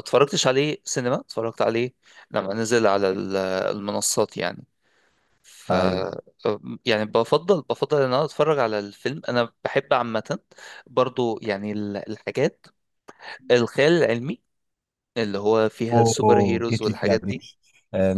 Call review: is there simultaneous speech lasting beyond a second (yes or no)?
yes